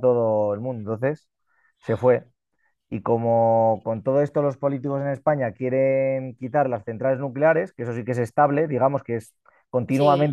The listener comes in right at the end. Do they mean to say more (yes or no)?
no